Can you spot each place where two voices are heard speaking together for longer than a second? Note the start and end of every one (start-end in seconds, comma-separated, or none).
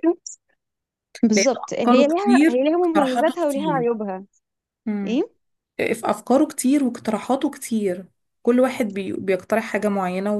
1.3-3.9